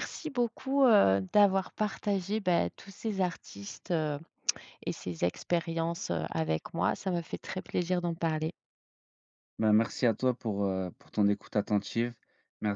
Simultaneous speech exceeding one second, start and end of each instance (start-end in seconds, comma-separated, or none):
none